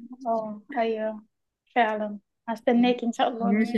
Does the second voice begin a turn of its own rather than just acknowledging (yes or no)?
yes